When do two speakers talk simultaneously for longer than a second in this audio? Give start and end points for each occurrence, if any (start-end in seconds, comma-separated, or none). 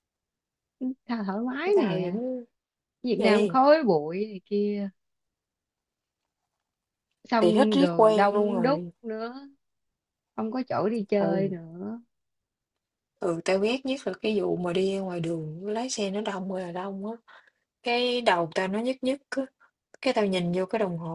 7.4-8.9